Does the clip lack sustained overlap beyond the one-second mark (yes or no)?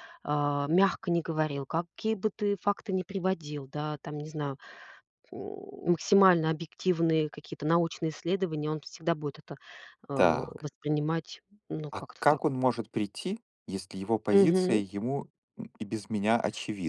yes